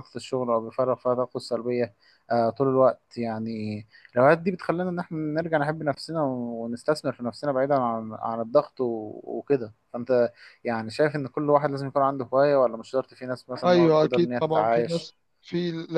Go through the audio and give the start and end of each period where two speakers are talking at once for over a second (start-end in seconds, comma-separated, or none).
13.7-15.2